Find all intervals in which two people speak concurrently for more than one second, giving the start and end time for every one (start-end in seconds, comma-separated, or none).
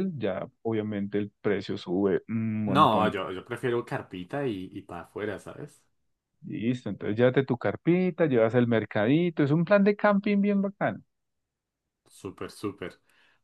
none